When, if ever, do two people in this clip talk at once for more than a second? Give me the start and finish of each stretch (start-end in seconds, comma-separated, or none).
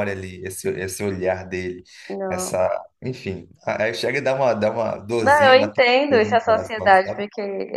5.2-7.2